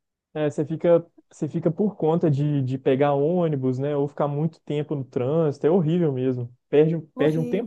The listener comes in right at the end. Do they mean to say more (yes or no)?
no